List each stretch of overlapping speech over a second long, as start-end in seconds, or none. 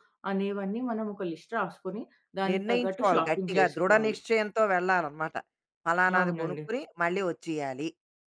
2.5-4.2